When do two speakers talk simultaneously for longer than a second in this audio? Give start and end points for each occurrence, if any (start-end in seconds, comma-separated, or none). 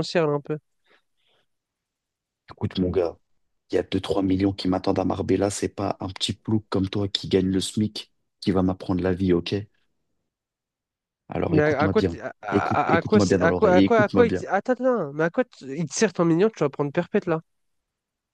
11.5-14.4